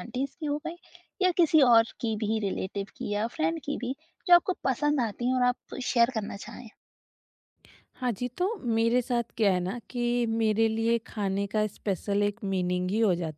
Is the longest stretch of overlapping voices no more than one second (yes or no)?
yes